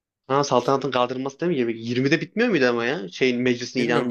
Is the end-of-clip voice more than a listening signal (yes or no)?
yes